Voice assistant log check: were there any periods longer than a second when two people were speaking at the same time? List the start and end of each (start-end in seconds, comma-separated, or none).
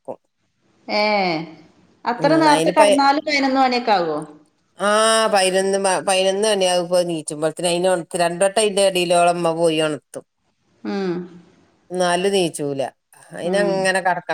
none